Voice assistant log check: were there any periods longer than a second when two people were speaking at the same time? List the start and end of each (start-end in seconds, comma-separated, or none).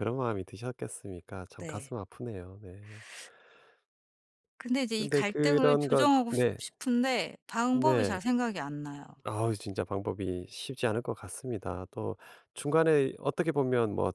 5.0-6.6